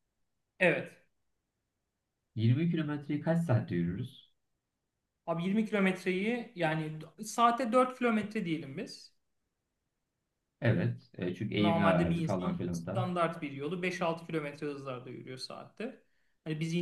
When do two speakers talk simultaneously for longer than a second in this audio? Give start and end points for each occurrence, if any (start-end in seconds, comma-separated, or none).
11.5-13.1